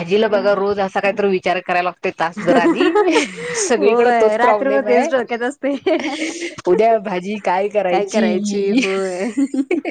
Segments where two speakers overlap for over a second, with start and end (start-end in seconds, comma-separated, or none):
3.8-5.1